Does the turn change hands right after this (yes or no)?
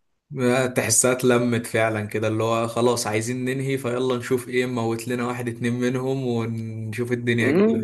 yes